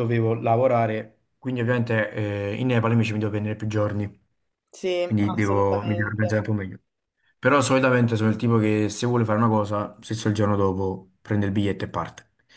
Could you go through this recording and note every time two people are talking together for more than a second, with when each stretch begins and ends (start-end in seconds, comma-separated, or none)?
5.0-6.4